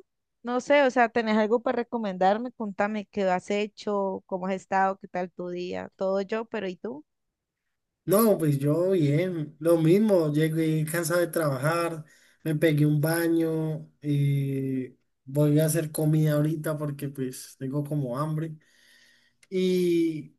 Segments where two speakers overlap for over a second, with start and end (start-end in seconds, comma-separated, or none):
none